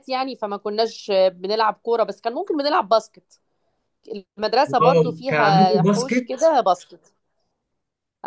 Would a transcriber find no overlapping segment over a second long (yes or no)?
no